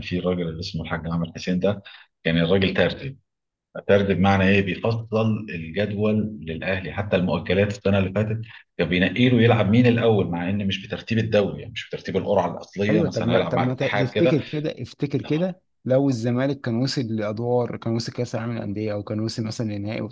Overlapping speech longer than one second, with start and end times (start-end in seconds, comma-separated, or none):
12.9-14.4